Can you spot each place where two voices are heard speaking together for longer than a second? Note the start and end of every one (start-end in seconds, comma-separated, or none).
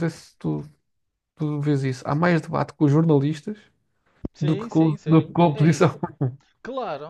4.4-6.0